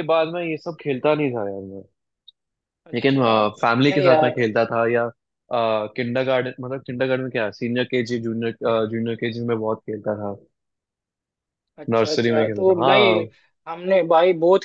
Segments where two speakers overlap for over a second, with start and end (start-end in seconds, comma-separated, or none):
11.9-13.2